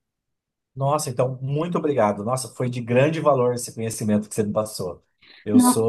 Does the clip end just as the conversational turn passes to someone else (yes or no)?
no